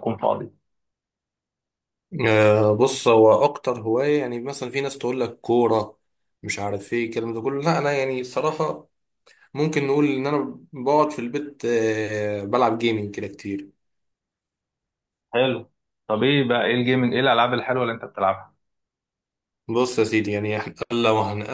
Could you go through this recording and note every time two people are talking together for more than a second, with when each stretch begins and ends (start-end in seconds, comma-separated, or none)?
none